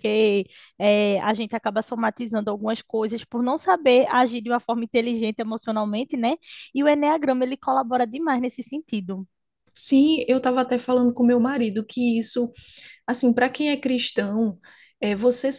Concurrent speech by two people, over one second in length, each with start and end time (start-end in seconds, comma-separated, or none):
none